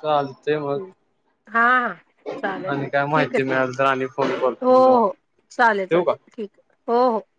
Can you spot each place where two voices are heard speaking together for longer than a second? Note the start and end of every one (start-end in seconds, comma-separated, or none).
2.7-5.1